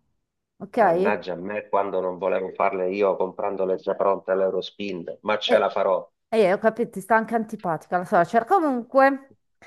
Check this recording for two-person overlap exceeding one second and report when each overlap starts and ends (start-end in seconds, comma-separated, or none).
none